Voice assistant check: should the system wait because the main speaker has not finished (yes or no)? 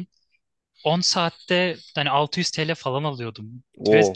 yes